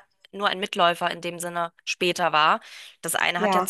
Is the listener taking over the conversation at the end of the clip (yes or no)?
no